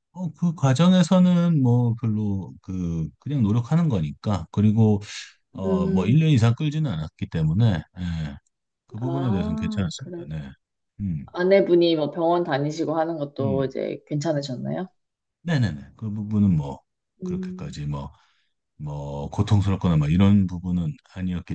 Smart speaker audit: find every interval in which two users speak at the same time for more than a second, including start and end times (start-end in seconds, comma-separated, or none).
9.0-10.3